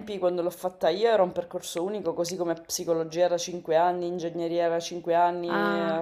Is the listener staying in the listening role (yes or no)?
yes